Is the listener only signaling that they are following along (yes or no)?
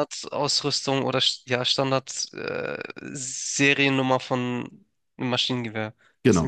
no